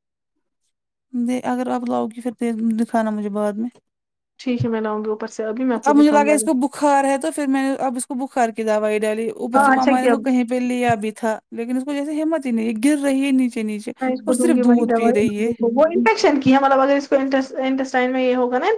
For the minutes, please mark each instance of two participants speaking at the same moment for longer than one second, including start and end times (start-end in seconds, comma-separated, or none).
14.0-15.5